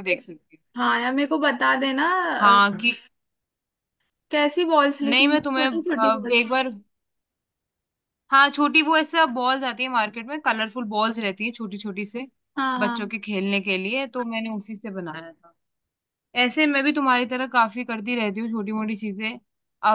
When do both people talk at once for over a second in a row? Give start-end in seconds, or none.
5.0-6.7